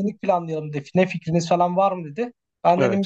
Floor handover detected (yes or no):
no